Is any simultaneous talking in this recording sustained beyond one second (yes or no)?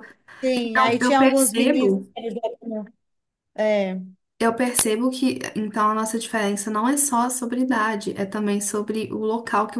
yes